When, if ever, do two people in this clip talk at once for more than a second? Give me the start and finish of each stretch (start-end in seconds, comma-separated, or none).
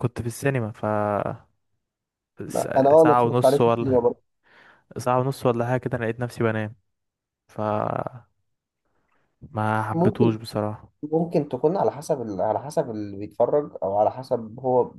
2.5-4.0